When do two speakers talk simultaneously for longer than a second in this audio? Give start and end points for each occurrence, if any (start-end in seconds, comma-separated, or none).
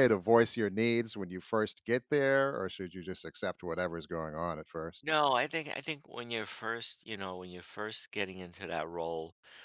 none